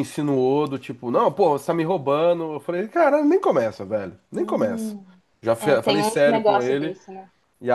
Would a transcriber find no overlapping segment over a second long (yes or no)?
no